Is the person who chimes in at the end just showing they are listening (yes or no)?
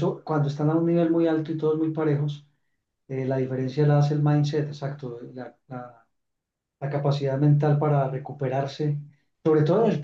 yes